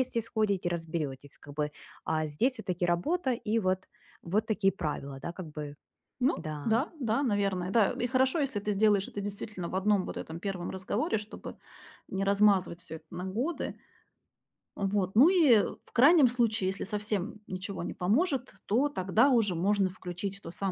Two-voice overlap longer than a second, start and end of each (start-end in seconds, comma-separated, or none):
none